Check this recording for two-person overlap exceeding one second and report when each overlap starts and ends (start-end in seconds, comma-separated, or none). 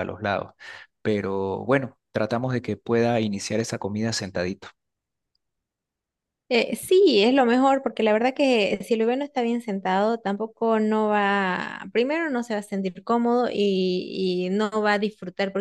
none